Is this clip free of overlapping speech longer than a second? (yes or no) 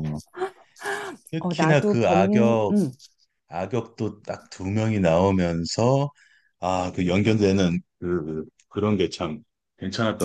no